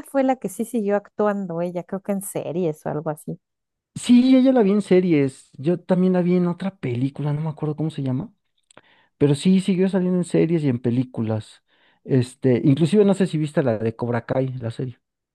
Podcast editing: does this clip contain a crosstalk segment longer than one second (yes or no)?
no